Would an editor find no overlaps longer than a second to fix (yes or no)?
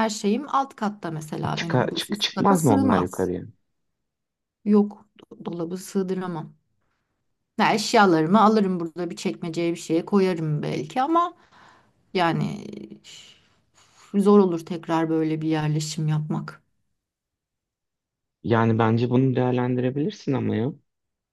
no